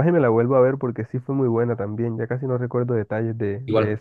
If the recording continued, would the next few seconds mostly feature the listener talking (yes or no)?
yes